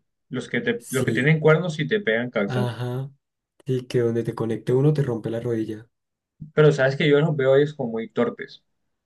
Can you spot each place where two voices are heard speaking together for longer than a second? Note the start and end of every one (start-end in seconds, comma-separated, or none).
none